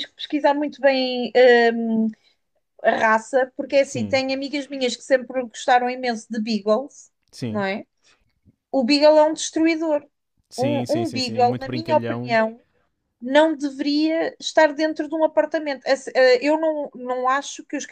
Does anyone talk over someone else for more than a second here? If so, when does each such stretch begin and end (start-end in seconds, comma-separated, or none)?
10.6-12.4